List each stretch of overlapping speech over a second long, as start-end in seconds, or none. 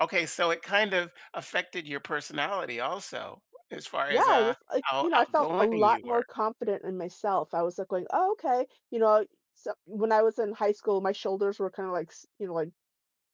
4.1-6.2